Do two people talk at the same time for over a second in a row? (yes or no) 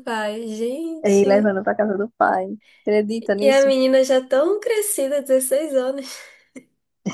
no